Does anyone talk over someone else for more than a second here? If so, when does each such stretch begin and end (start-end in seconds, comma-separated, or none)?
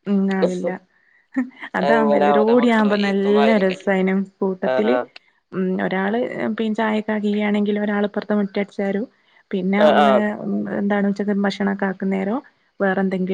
1.9-3.9